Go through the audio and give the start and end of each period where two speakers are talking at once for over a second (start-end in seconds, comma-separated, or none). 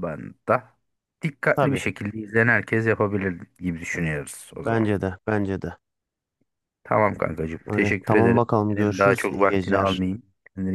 7.7-10.0